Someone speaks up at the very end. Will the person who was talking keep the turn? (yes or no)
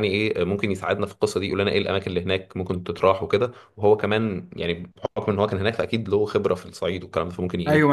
no